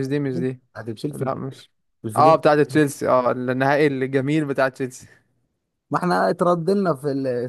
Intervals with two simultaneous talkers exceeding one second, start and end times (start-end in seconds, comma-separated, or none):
none